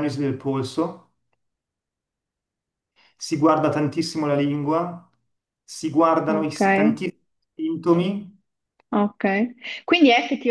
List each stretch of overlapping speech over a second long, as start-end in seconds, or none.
none